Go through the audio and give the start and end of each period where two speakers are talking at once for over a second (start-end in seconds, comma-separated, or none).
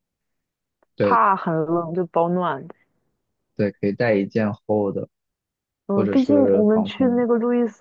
5.9-7.2